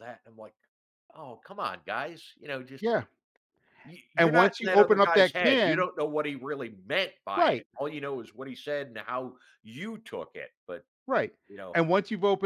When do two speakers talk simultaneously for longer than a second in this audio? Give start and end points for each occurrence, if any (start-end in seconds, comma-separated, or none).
4.2-5.9